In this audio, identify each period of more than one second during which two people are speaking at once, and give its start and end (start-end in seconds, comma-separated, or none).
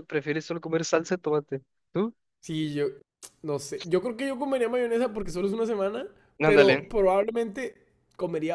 none